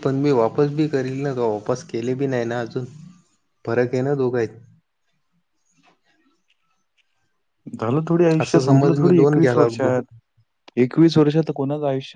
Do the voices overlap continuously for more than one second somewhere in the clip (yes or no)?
yes